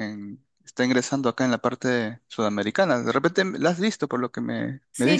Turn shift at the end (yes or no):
yes